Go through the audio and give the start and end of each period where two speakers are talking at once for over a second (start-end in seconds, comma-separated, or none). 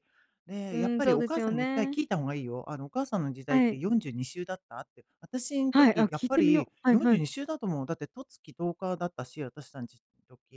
0.7-2.0, 5.7-7.2